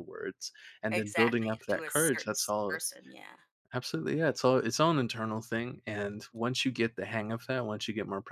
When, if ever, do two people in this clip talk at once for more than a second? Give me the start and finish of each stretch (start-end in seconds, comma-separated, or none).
0.9-2.8